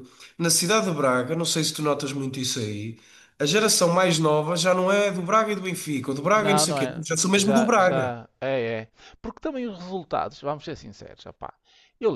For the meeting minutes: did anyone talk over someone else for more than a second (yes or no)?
yes